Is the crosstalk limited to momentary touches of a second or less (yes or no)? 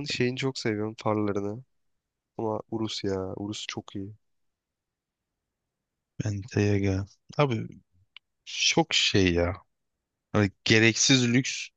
yes